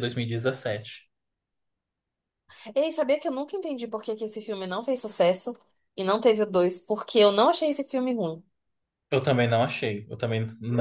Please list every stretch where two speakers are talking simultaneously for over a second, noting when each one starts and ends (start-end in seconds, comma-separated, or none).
none